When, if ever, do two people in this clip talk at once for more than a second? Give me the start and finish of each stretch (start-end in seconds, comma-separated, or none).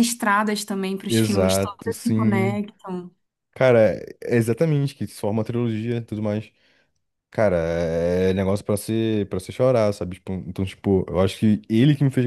1.1-2.6